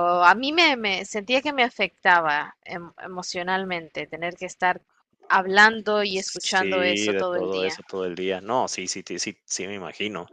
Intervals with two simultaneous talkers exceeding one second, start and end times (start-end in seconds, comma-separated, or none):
6.1-7.8